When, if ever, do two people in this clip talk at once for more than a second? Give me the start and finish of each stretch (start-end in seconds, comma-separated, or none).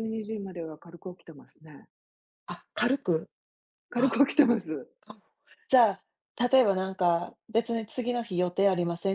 none